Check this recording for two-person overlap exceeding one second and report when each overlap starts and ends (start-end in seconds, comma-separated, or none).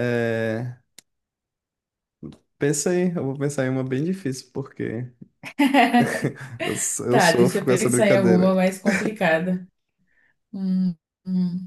7.1-8.5